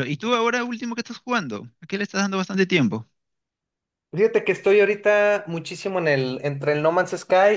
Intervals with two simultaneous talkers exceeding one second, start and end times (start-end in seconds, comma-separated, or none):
none